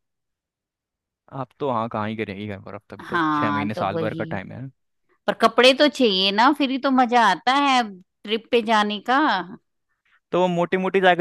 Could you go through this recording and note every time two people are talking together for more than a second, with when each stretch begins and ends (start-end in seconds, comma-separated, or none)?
3.1-4.4